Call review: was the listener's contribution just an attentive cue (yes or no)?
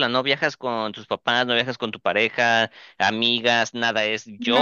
no